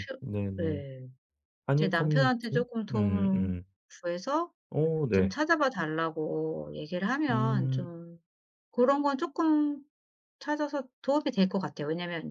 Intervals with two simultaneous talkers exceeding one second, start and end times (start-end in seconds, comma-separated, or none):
1.8-3.5